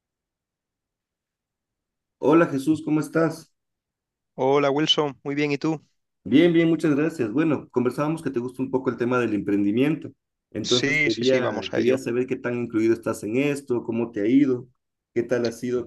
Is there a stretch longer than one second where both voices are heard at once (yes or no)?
yes